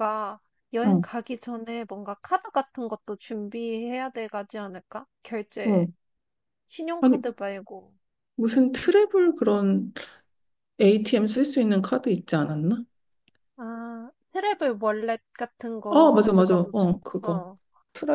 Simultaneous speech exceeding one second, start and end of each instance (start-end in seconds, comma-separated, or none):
15.9-17.4